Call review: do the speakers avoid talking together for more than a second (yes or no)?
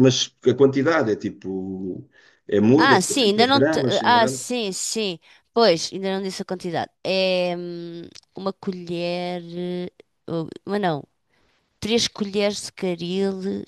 no